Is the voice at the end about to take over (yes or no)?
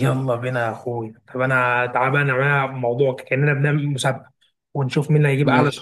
no